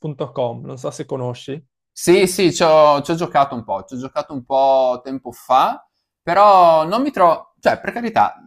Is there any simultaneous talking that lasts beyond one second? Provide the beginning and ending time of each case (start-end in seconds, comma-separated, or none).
none